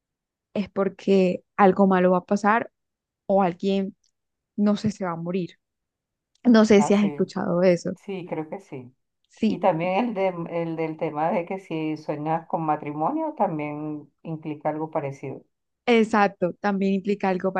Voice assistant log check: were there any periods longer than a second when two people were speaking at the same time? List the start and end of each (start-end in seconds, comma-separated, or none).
none